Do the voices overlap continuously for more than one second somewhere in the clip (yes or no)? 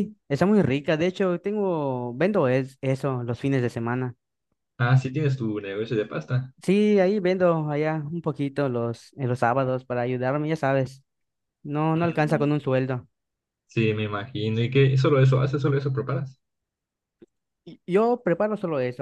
no